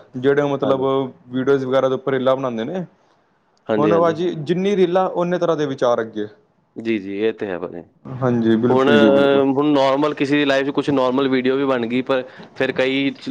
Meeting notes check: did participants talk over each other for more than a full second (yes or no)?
no